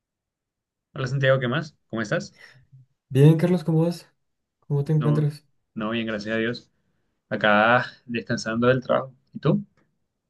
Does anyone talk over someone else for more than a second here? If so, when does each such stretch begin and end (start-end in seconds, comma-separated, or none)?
none